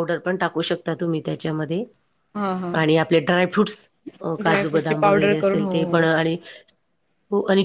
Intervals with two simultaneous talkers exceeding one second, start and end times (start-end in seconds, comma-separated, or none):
4.4-6.0